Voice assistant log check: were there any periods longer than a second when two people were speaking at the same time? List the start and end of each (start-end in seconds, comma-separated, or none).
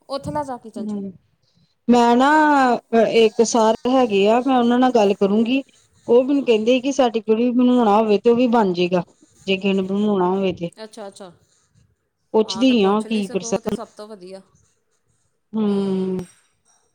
12.5-13.8